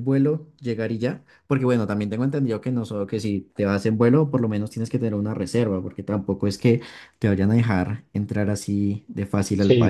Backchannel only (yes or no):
no